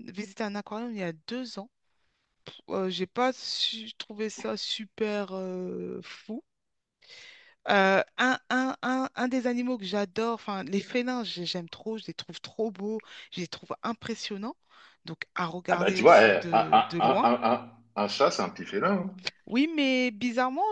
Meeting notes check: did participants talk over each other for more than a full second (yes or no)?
yes